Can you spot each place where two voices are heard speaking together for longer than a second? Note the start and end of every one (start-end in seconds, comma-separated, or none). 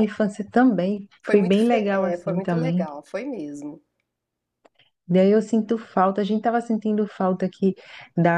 1.2-2.9